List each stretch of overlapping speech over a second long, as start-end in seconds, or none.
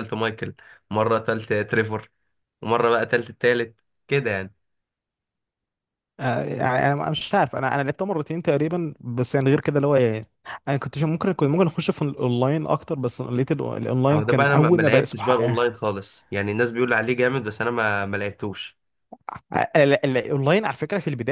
14.1-15.6